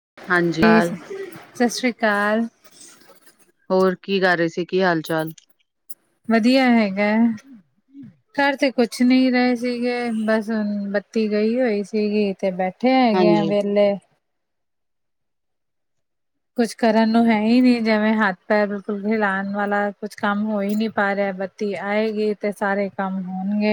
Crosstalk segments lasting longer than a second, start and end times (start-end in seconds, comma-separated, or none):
none